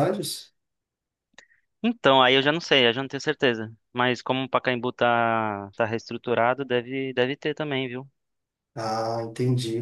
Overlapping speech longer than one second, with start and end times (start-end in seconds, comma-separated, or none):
none